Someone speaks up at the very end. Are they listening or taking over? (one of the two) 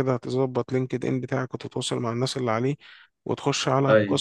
listening